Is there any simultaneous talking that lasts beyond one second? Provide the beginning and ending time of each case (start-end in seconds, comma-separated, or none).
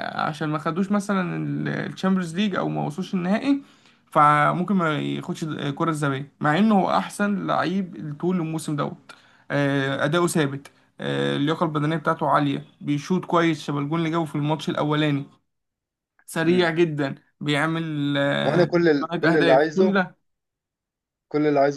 18.4-20.0